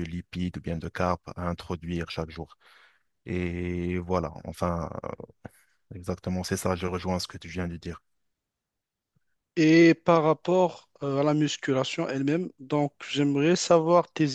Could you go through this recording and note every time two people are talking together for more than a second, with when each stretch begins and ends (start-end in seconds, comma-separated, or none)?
none